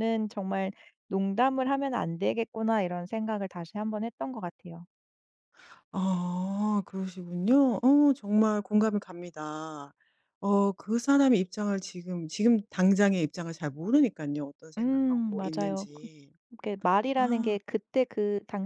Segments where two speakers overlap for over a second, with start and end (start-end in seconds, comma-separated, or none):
14.8-16.1